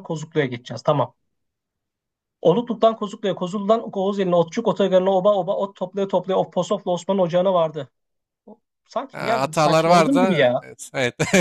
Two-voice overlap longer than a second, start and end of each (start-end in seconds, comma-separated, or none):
9.1-10.6